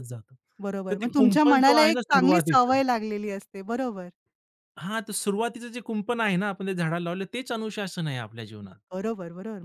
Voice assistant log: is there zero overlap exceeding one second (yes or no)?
no